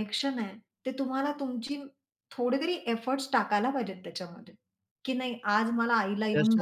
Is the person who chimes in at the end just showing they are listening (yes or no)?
no